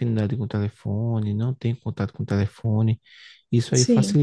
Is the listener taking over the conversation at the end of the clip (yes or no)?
no